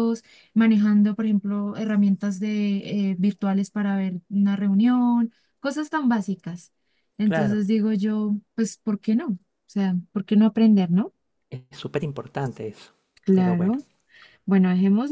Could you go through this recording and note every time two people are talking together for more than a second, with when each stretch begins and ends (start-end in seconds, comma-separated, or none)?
none